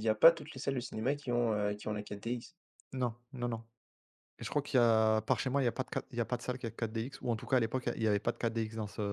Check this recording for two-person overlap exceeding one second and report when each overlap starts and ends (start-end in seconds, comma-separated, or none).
none